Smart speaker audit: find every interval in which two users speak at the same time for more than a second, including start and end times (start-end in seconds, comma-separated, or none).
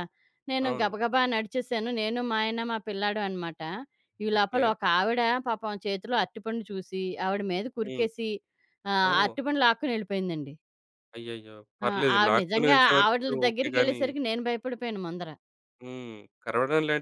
11.9-14.0